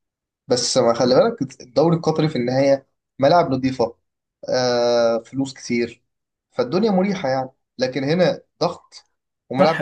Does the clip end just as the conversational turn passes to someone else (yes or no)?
yes